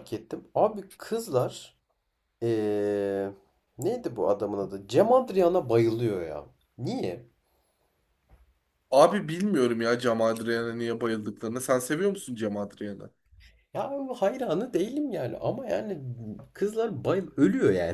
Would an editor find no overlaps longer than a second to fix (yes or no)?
yes